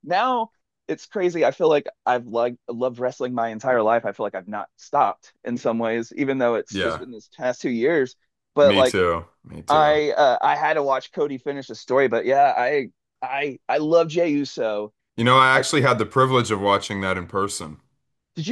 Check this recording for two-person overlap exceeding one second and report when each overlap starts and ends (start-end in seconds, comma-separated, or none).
none